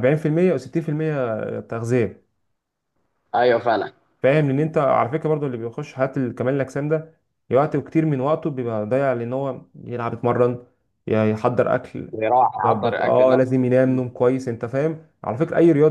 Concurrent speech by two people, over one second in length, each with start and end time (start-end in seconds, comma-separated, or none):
12.6-14.0